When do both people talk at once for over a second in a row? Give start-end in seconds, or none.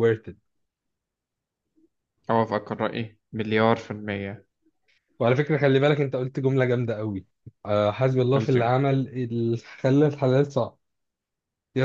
none